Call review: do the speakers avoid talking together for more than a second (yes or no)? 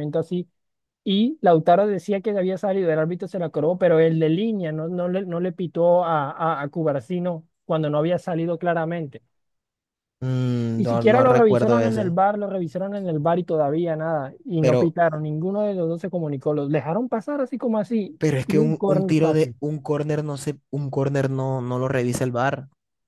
no